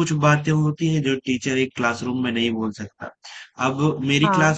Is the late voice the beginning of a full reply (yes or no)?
no